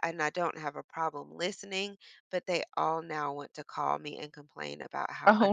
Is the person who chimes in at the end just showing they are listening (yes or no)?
yes